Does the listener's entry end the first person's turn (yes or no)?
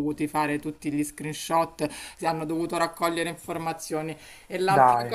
no